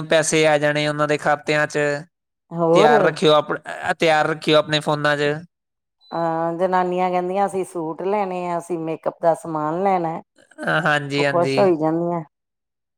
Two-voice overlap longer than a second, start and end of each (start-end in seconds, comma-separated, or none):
none